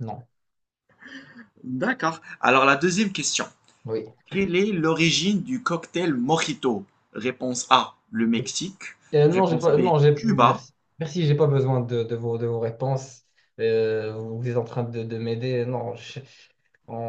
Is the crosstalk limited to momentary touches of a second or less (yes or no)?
no